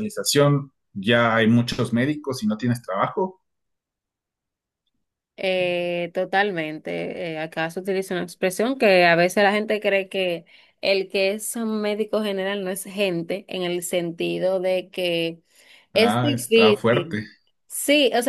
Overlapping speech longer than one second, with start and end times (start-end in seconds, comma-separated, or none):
15.9-17.2